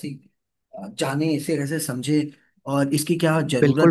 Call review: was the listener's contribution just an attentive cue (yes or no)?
no